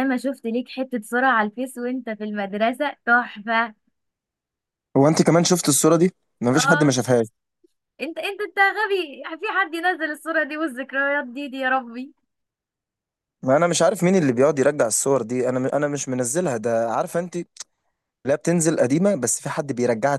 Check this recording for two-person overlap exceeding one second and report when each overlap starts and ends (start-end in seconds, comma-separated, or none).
none